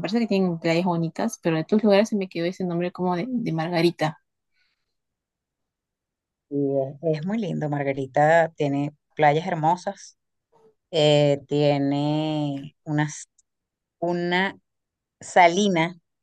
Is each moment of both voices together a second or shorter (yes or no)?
yes